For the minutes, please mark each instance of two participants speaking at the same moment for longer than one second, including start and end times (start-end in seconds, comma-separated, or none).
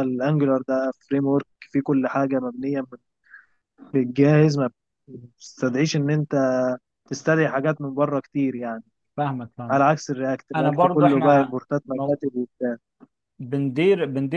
10.6-12.2